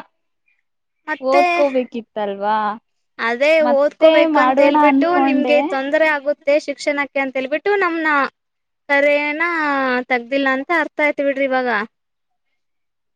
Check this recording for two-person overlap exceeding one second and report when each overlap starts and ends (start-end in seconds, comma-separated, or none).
3.7-5.5